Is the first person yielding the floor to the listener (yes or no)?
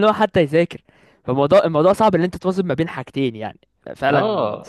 yes